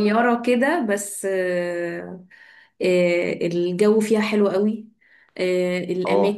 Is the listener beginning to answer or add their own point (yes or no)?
no